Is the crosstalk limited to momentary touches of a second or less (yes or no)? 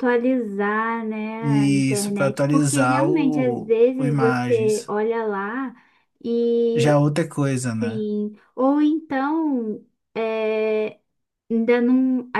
no